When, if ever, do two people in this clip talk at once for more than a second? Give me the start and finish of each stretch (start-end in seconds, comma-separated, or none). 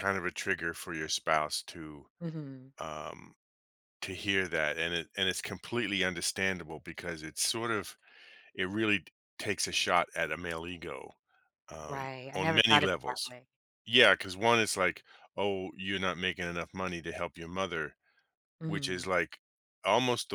11.8-13.3